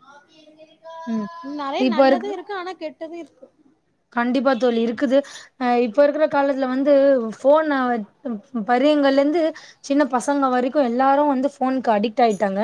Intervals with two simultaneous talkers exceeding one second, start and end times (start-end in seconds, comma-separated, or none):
none